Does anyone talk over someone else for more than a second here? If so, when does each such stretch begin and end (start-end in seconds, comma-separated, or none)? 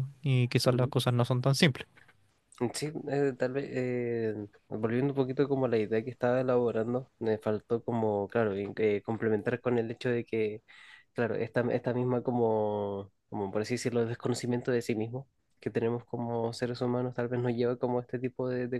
none